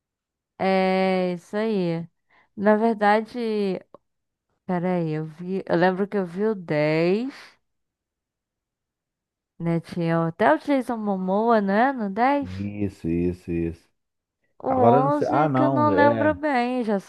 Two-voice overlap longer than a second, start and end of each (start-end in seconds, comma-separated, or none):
14.7-16.4